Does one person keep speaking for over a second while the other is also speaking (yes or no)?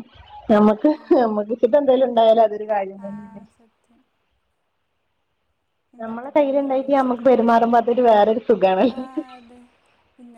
yes